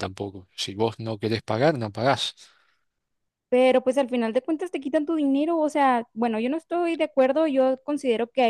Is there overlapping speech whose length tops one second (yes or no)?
no